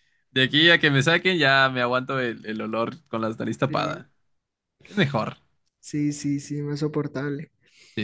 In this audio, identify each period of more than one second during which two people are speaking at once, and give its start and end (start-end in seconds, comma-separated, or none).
none